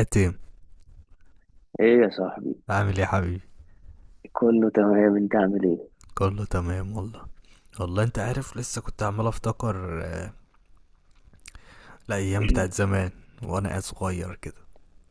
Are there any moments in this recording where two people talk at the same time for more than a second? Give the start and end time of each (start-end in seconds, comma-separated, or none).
none